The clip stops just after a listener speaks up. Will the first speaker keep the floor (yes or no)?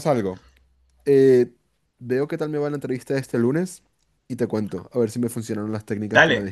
no